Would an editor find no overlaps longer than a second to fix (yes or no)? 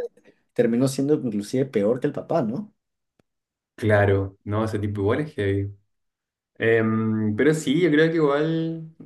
yes